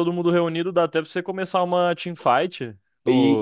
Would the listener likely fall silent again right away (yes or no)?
no